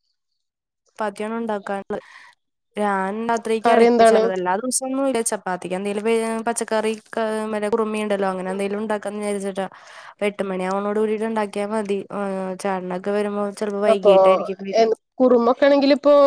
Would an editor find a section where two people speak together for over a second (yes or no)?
no